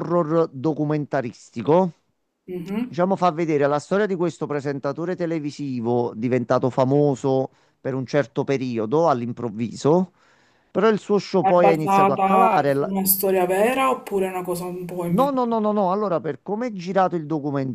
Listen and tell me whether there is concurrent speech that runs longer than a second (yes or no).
yes